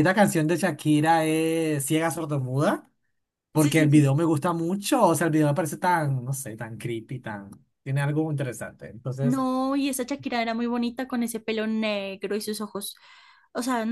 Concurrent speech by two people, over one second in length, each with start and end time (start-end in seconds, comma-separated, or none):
none